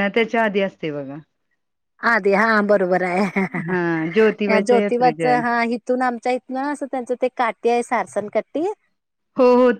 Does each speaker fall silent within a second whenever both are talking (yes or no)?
no